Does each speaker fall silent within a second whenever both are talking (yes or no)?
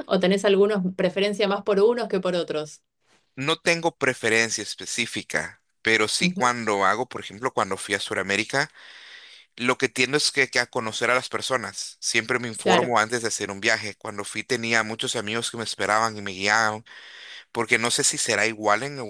yes